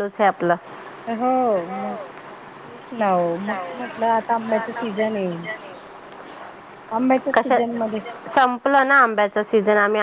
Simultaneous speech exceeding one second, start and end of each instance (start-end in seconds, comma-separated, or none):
none